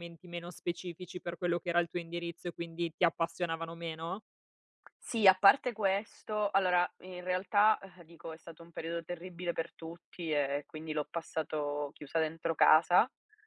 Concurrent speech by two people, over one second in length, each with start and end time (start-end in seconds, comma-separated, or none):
none